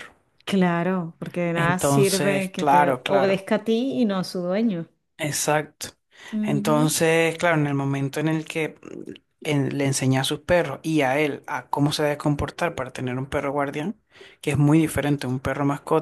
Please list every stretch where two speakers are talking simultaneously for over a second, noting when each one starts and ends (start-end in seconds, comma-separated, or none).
1.6-3.5